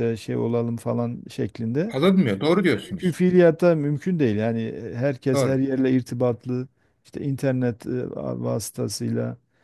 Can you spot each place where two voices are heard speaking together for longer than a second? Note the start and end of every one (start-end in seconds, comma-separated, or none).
none